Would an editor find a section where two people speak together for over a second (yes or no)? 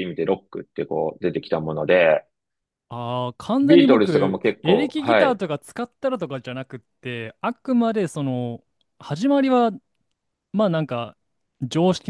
yes